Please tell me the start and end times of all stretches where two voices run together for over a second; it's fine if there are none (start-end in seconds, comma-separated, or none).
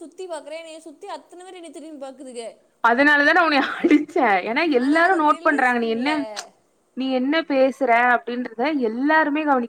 4.8-6.4